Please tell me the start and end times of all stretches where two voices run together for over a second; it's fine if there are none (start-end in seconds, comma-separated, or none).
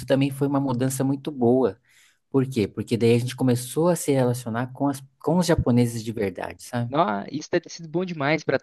none